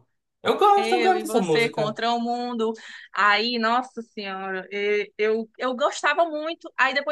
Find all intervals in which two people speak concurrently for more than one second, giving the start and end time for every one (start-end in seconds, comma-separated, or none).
0.8-2.0